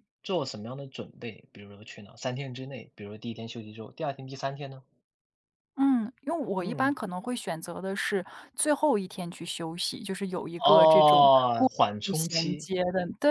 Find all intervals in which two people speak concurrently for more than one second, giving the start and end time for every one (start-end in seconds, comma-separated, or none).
10.6-12.7